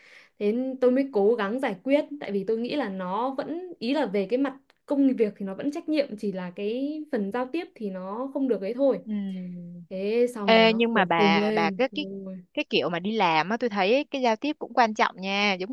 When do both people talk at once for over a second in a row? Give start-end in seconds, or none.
10.4-11.8